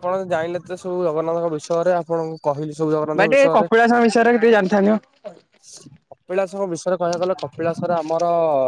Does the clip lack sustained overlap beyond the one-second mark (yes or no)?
yes